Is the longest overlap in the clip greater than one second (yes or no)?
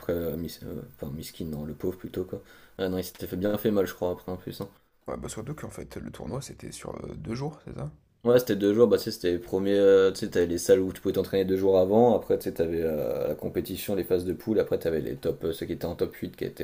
no